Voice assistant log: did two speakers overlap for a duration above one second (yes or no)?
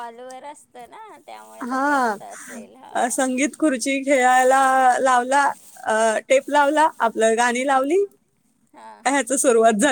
yes